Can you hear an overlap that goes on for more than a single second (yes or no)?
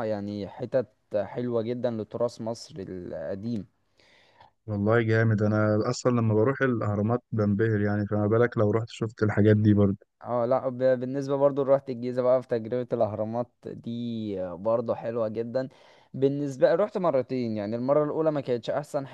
no